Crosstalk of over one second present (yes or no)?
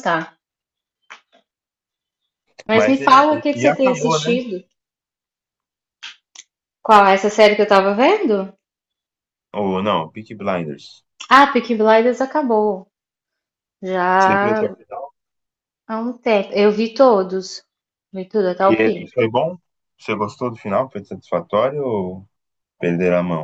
yes